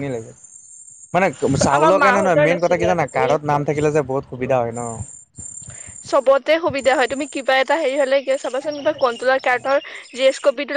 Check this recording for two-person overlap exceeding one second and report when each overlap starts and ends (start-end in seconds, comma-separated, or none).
1.8-3.7